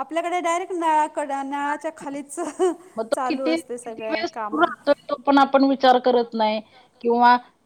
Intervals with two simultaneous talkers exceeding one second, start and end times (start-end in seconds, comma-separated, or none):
3.1-4.6